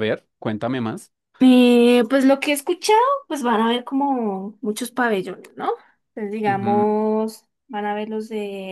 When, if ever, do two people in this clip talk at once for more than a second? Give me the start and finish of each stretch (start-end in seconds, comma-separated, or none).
none